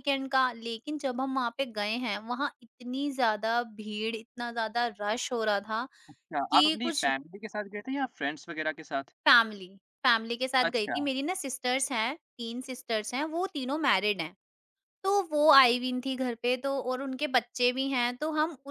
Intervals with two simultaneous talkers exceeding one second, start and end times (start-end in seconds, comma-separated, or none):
none